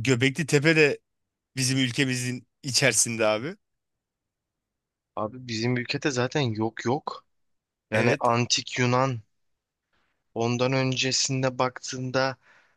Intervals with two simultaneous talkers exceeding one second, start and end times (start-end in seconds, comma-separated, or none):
none